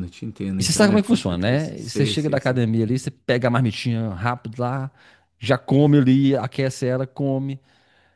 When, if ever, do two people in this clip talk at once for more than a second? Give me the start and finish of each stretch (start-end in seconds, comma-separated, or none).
0.6-2.6